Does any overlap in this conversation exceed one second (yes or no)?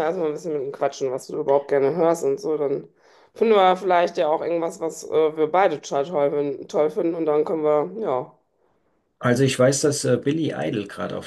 no